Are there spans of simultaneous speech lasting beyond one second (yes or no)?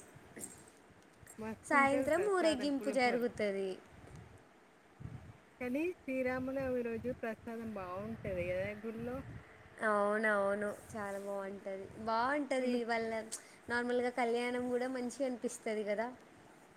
yes